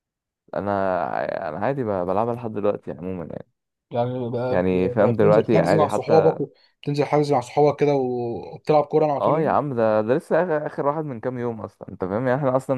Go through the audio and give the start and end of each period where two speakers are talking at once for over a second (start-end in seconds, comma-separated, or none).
4.5-6.4